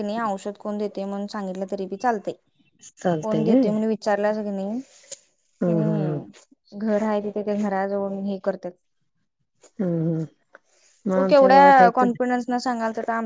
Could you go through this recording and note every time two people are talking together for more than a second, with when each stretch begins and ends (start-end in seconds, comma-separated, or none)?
none